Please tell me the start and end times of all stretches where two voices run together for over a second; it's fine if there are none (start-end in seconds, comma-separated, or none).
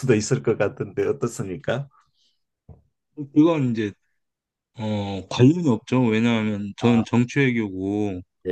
none